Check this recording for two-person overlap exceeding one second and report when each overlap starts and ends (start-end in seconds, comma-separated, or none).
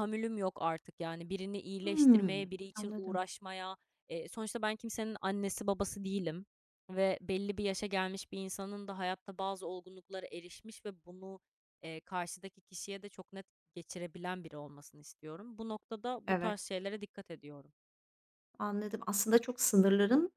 1.8-3.2